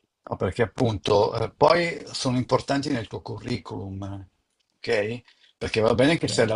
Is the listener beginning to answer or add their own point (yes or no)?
no